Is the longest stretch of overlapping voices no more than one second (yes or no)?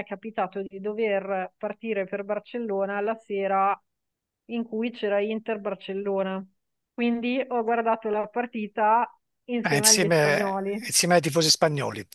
no